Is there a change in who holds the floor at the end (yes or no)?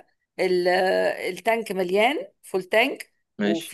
no